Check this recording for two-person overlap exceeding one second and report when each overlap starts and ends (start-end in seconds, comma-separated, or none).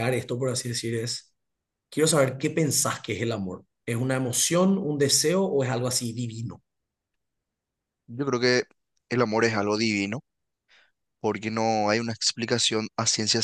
none